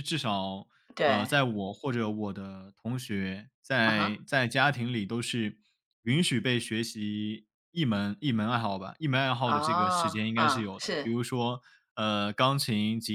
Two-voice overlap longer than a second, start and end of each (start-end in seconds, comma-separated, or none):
9.4-11.1